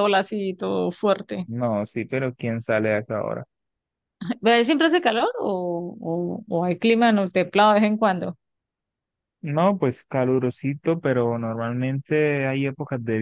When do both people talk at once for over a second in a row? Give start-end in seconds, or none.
none